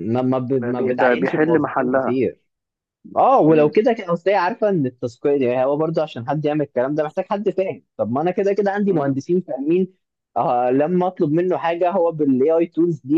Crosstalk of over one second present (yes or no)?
yes